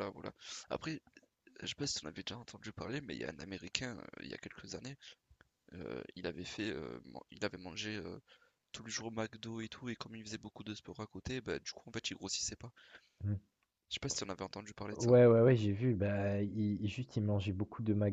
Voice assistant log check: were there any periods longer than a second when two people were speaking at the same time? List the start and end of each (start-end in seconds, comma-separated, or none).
none